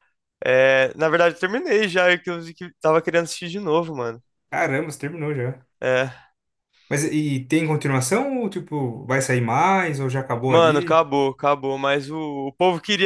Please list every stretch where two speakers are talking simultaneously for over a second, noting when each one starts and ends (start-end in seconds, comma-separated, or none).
none